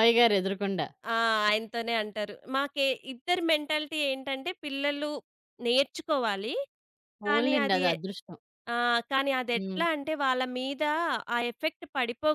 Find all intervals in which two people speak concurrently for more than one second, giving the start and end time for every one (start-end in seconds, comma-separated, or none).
none